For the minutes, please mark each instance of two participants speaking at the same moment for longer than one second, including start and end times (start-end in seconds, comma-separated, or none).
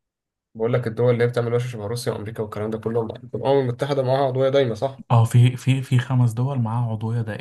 none